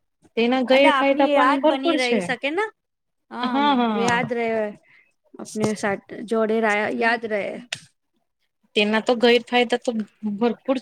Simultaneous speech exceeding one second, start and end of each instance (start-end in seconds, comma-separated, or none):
0.8-2.2